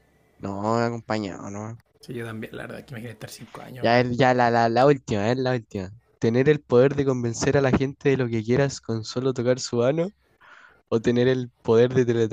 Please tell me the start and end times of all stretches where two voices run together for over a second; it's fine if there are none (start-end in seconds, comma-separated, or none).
none